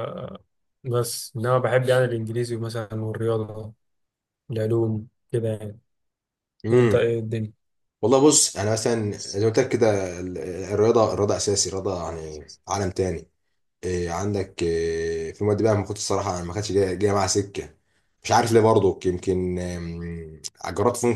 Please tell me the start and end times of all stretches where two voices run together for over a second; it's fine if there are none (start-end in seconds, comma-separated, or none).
none